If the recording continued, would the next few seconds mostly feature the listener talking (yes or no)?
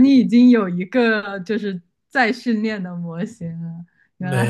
yes